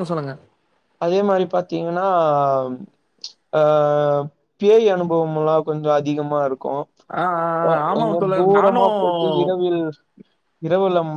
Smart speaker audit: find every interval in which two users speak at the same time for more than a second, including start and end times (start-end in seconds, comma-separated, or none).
7.2-9.6